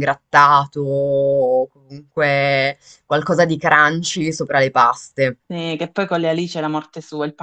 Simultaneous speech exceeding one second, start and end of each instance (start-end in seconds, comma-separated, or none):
none